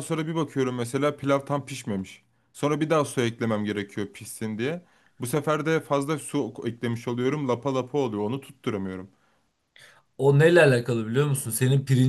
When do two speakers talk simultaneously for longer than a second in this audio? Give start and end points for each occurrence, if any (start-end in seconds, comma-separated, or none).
none